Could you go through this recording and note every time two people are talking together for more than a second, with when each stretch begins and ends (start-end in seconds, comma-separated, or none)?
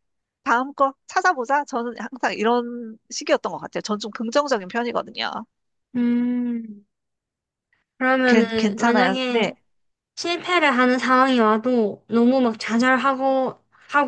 8.2-9.5